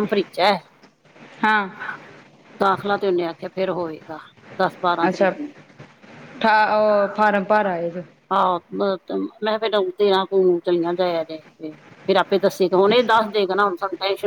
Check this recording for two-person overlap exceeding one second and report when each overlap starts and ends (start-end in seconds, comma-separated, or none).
none